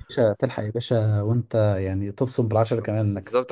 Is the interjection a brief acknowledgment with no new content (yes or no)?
no